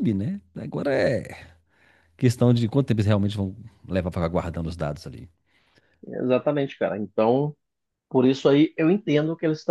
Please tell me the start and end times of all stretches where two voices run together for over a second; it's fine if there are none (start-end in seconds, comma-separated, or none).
none